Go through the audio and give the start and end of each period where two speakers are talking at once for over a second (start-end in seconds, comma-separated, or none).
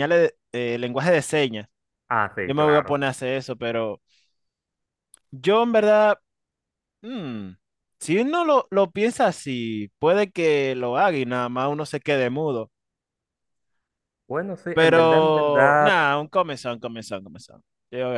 14.7-16.1